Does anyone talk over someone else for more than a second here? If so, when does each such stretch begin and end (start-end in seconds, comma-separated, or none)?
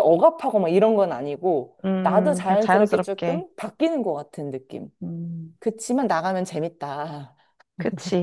1.9-3.5